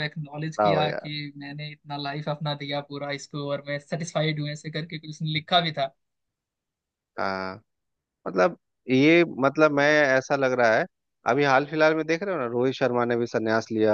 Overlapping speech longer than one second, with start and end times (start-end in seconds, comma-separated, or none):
none